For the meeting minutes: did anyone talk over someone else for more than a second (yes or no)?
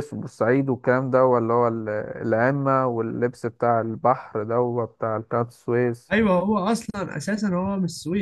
no